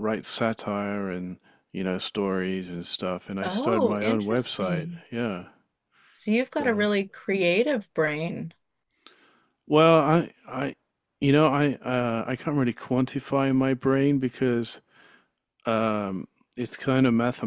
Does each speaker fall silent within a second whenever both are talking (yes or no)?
no